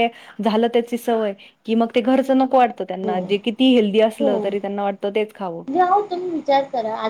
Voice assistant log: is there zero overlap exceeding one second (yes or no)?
no